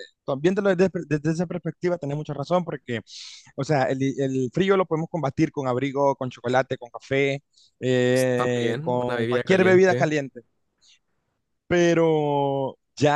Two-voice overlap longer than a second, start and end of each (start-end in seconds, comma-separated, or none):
8.0-10.1